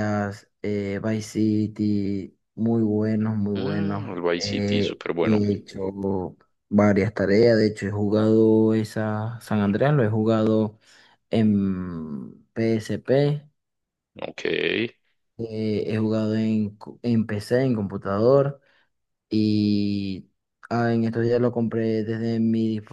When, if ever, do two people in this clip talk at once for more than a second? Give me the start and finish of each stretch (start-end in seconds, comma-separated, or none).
3.5-5.4